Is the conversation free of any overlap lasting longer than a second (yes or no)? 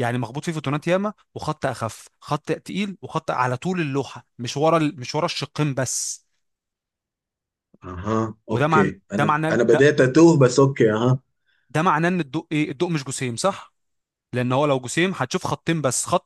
no